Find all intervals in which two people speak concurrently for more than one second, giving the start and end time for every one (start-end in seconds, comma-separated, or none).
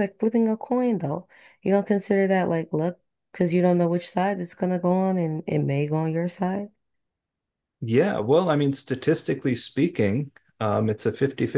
none